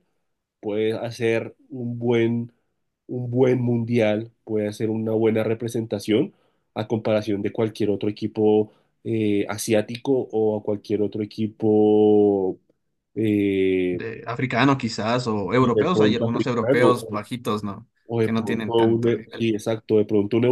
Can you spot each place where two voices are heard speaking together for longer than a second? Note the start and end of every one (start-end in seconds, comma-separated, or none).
15.6-17.0, 18.1-19.5